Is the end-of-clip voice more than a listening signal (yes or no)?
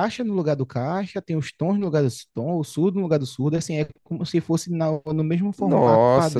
yes